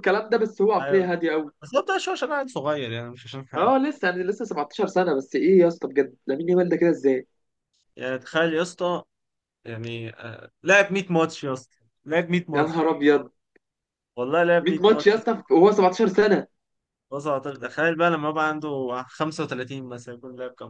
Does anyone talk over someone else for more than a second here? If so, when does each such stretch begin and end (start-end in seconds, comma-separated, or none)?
none